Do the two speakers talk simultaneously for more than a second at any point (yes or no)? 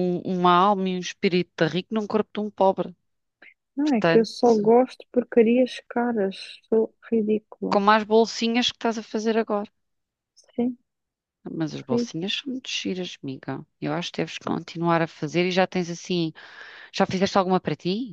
no